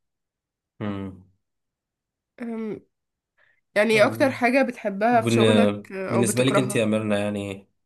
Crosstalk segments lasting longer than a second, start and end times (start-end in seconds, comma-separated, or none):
5.1-6.9